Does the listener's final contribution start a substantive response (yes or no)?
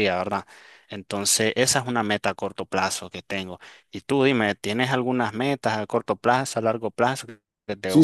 yes